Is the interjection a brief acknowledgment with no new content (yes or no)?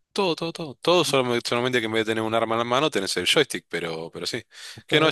yes